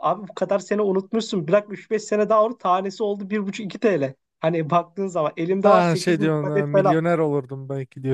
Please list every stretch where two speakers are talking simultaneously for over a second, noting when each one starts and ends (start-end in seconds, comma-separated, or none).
5.6-7.0